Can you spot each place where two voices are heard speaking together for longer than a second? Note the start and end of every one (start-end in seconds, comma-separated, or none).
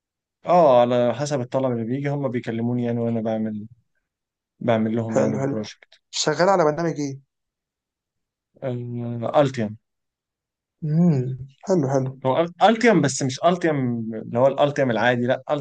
none